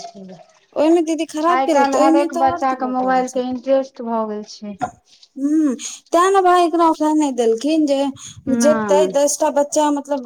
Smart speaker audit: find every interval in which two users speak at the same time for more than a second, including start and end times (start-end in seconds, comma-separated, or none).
1.5-3.3